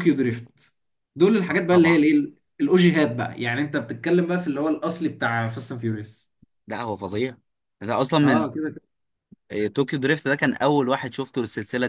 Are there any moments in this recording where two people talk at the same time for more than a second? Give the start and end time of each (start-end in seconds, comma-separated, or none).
none